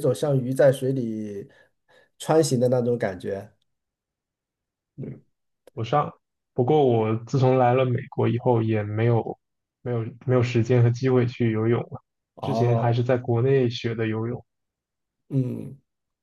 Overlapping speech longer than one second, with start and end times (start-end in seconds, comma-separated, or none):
none